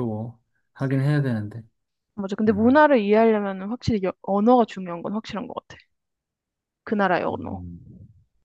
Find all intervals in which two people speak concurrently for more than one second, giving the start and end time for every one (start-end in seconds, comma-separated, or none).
none